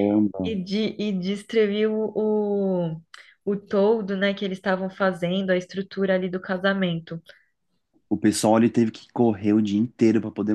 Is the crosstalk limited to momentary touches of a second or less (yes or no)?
yes